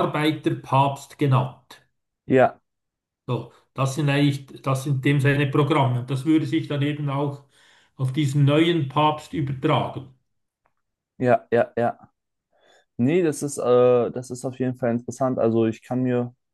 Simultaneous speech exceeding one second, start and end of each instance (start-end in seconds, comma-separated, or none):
none